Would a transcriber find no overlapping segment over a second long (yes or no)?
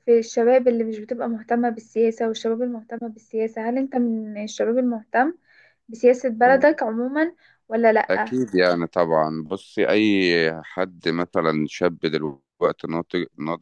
yes